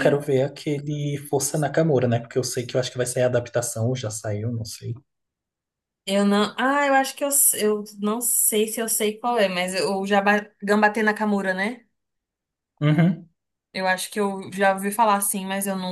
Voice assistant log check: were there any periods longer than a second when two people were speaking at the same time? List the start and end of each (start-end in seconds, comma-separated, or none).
none